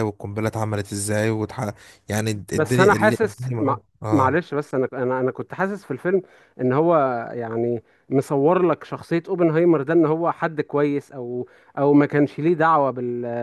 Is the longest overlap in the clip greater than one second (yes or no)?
yes